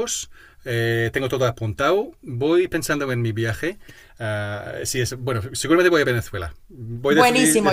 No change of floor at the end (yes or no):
no